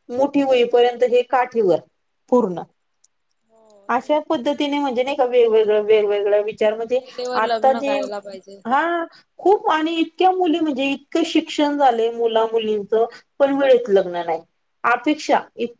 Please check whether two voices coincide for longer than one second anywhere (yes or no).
no